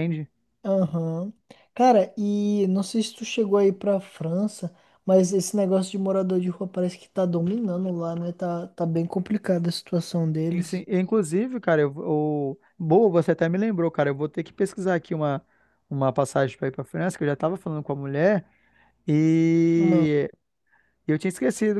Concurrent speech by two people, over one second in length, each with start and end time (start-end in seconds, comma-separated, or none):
none